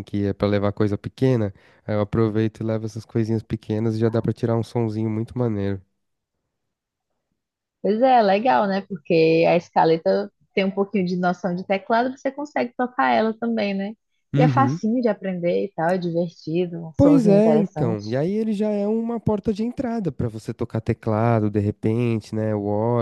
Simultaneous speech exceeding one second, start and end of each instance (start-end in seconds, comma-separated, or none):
17.0-18.2